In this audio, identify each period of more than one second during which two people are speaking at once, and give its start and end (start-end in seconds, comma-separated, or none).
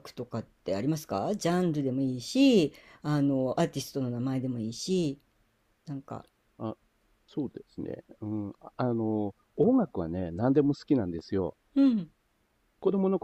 none